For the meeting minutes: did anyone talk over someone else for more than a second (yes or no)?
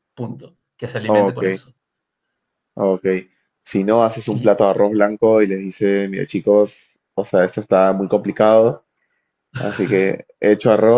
no